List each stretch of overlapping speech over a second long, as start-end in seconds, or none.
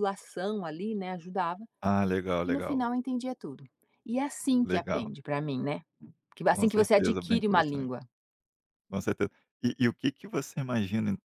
6.5-7.9